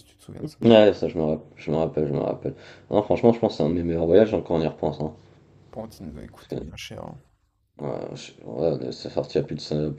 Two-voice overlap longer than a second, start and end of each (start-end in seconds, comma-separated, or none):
none